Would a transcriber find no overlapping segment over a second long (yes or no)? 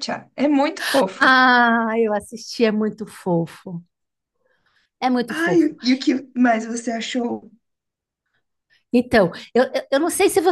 yes